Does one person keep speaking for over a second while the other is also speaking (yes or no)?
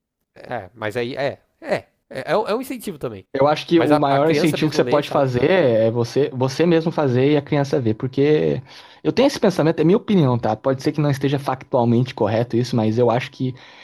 yes